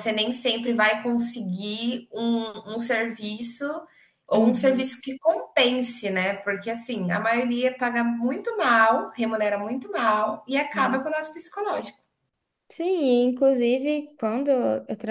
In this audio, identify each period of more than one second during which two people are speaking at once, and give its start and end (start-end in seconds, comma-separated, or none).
none